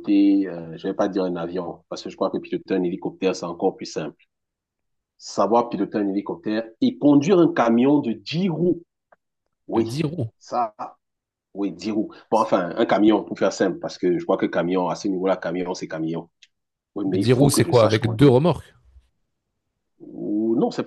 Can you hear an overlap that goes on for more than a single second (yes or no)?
yes